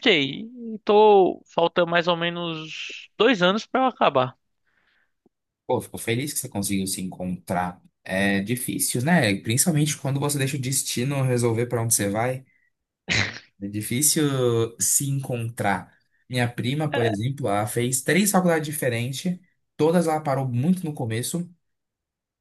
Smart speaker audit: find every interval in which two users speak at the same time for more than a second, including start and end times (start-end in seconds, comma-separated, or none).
none